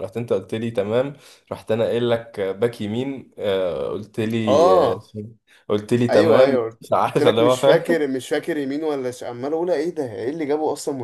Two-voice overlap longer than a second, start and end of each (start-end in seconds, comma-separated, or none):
6.1-8.1